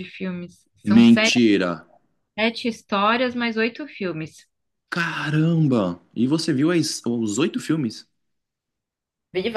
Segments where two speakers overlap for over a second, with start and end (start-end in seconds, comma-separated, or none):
none